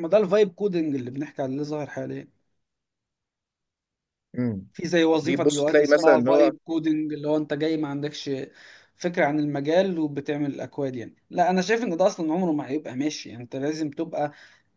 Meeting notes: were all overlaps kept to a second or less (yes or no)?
no